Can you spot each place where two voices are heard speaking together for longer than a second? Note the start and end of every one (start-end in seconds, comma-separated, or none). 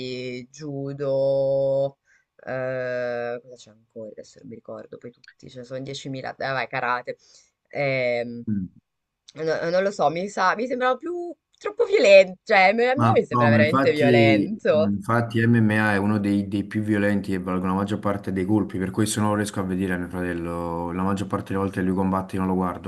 12.9-14.9